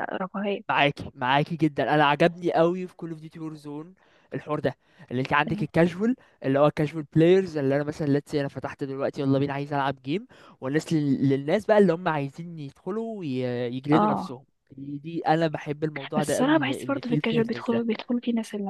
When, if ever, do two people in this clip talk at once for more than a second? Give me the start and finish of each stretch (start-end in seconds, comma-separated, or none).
16.2-17.8